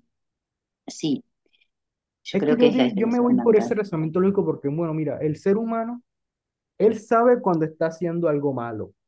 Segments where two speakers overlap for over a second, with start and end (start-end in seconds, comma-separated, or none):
2.3-3.7